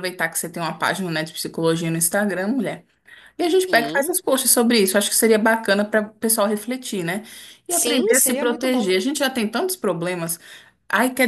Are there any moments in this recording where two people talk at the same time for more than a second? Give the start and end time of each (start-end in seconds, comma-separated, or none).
7.7-8.9